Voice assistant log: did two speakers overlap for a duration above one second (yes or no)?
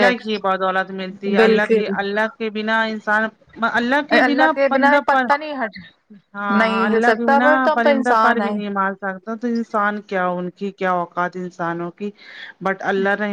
yes